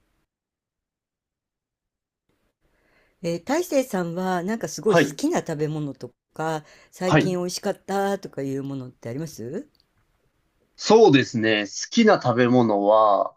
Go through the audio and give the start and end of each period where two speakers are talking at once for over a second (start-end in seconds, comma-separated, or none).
none